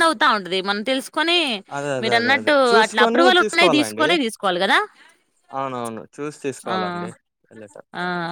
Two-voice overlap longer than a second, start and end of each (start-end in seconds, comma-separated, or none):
2.0-4.1